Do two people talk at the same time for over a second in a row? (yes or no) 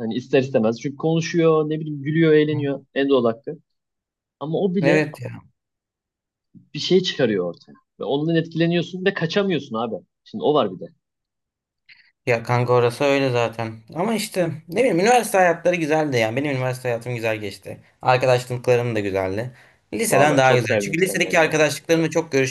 yes